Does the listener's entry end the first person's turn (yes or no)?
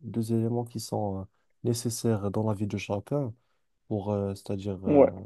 no